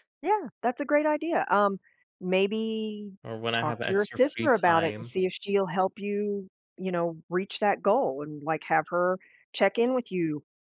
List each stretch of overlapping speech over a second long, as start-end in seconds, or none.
3.5-5.1